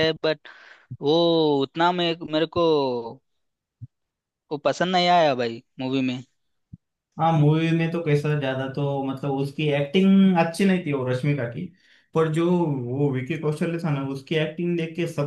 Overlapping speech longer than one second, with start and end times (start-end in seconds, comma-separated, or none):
none